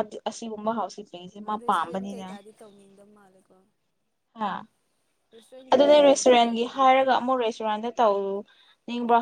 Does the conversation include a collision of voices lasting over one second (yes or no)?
yes